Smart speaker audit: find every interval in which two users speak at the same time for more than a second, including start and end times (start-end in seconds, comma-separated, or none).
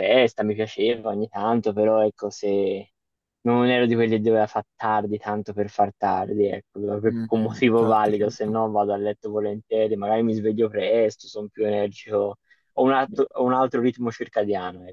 7.1-8.6